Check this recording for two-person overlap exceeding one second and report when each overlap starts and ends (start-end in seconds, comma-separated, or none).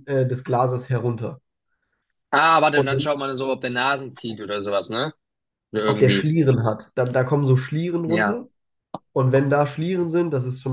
none